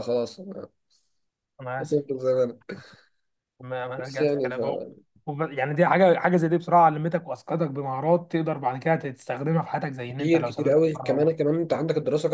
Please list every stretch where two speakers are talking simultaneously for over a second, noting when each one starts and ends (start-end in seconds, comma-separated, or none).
10.1-11.3